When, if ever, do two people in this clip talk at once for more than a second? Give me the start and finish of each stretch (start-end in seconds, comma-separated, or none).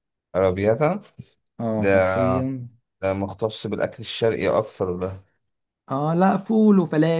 none